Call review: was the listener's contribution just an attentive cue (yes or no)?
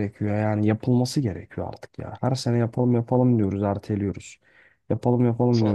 yes